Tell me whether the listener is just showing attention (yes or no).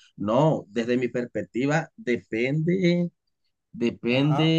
yes